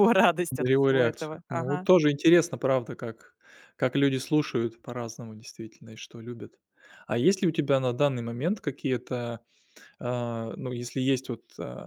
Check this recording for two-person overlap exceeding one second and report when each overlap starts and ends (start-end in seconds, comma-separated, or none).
0.6-1.9